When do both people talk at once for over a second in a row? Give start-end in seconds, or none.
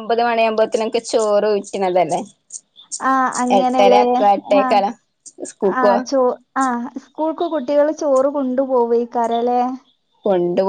none